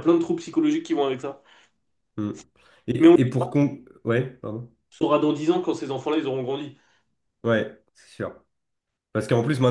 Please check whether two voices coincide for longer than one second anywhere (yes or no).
no